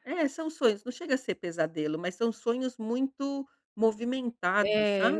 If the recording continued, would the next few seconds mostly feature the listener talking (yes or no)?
yes